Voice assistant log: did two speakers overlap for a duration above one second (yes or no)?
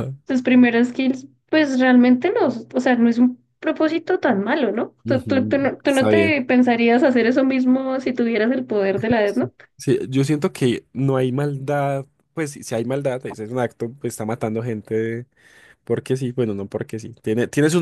yes